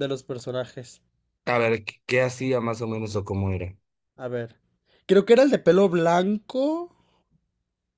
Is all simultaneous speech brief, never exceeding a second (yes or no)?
yes